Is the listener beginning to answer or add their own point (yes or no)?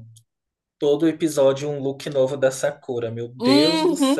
yes